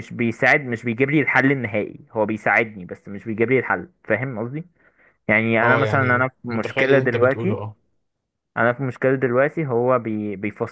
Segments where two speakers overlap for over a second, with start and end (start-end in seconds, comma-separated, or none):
5.6-7.6